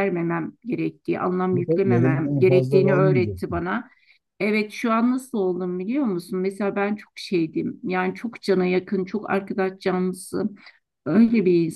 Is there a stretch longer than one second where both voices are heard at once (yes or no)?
yes